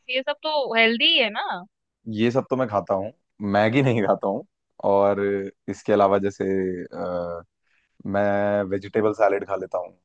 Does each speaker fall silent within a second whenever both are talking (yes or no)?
yes